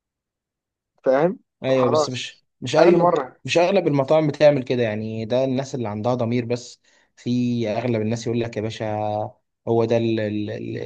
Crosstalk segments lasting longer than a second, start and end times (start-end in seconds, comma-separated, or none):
1.6-3.4